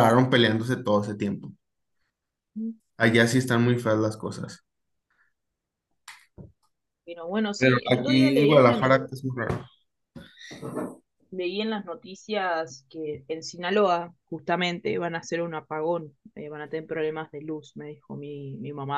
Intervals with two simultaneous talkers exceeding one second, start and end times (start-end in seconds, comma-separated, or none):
7.6-9.0